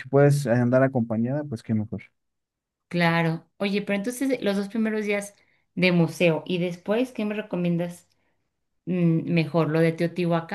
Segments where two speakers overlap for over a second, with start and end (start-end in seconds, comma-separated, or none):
none